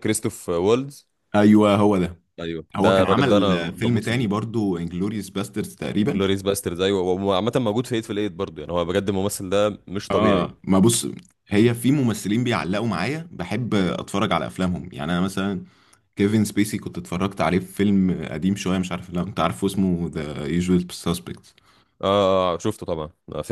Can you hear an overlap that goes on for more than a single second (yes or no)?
yes